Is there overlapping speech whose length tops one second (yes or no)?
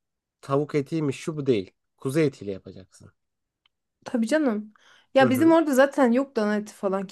no